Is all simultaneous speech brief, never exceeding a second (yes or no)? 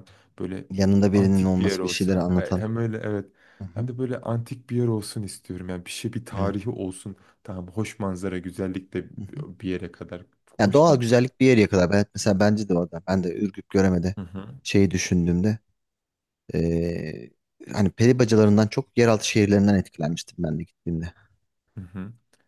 no